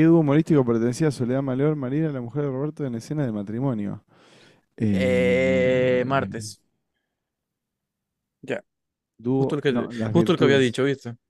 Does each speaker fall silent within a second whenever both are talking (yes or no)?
no